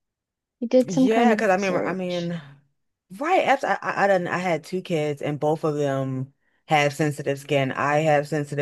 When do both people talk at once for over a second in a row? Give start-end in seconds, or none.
0.8-2.3